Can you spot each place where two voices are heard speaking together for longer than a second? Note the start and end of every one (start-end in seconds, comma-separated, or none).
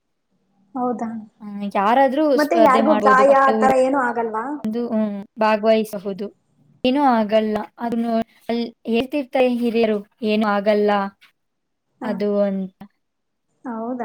2.4-4.4